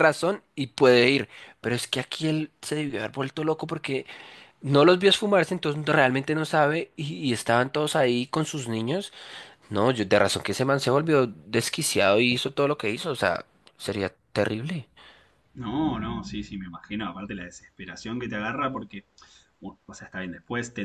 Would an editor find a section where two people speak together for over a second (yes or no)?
no